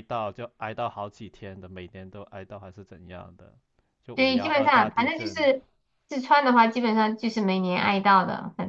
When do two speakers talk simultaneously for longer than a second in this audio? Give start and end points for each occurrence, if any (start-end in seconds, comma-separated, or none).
4.1-5.5